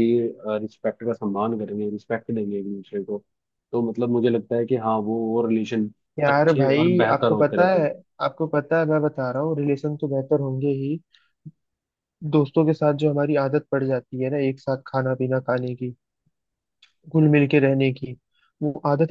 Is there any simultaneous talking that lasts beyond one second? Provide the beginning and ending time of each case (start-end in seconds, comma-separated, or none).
6.3-7.9